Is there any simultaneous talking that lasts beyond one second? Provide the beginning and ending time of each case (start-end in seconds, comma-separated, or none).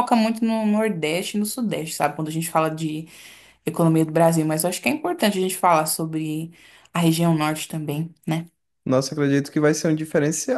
none